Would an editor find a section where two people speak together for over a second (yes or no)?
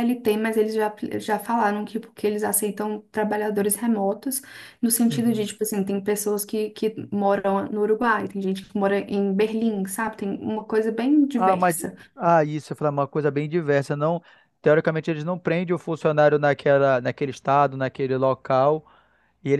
no